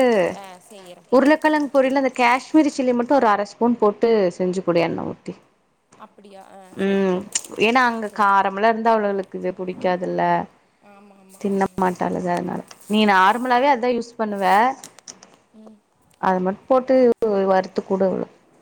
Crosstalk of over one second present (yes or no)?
no